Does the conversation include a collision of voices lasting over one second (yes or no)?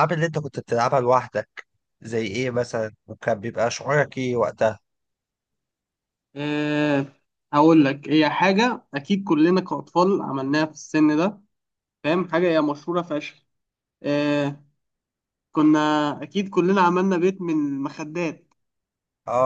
no